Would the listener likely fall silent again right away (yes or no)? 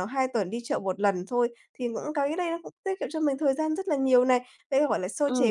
yes